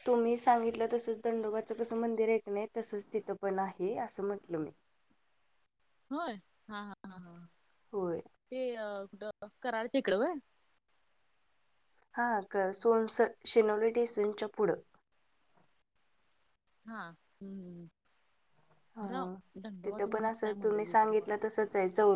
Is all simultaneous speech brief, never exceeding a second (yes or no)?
no